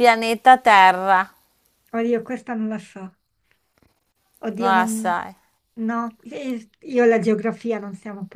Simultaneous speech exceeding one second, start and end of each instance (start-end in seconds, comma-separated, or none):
none